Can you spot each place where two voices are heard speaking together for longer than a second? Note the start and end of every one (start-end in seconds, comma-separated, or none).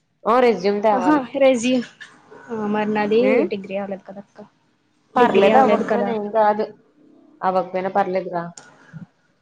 none